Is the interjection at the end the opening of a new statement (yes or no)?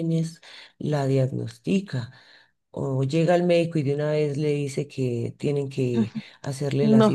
no